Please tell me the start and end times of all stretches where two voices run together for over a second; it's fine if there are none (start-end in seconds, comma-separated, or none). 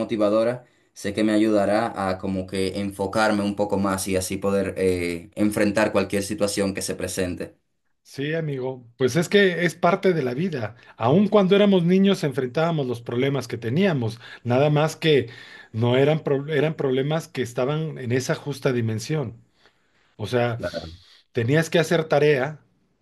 none